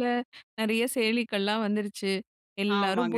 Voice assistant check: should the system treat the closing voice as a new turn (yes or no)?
no